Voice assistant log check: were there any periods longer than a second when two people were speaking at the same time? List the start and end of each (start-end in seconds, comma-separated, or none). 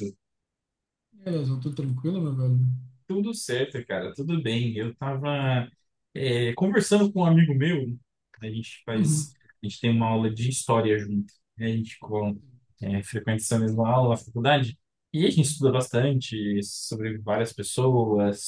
none